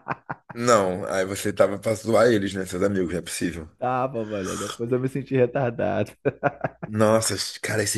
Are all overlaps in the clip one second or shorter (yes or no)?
yes